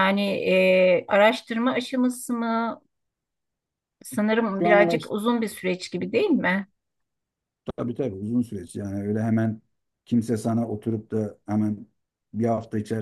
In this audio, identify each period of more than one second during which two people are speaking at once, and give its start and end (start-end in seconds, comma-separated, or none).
none